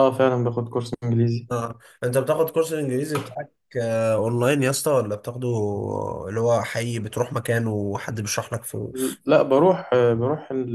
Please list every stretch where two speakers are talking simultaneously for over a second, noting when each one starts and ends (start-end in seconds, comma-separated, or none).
none